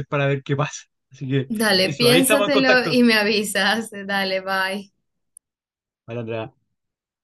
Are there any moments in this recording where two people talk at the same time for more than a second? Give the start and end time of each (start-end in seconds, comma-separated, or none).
1.5-3.0